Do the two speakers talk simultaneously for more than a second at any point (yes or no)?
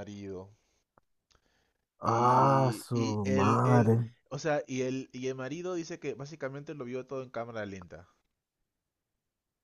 yes